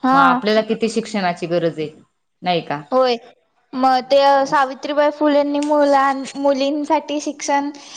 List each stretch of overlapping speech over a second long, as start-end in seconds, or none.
none